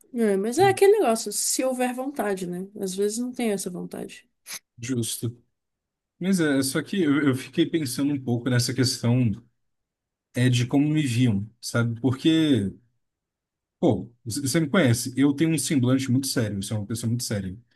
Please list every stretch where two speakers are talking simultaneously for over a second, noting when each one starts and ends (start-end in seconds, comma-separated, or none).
none